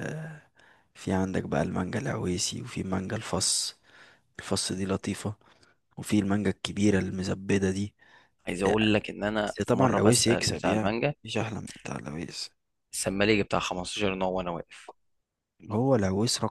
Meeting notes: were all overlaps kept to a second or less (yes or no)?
no